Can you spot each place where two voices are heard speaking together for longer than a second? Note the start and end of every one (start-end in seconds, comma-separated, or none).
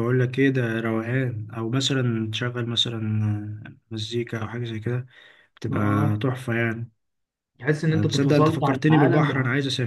7.9-9.3